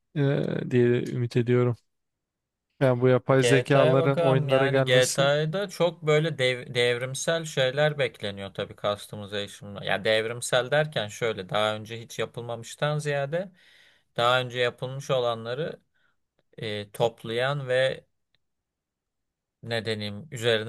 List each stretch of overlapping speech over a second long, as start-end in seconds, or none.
3.4-5.3